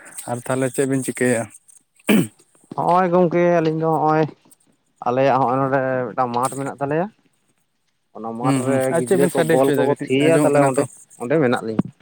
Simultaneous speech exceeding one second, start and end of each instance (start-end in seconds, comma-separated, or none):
8.4-10.8